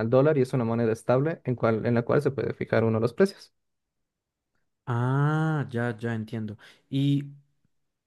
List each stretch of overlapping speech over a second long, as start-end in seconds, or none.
none